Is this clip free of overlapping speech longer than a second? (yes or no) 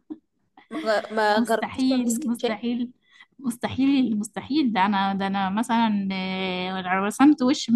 no